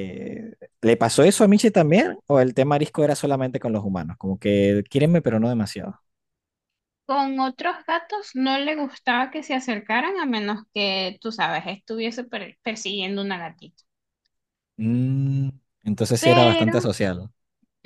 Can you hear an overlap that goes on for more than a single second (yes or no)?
no